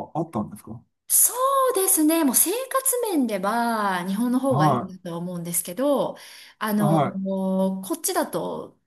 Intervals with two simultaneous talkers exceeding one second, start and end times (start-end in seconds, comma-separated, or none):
none